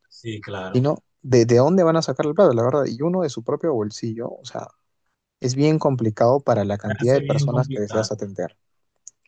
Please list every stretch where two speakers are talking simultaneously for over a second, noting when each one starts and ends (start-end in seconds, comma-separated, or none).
6.8-8.2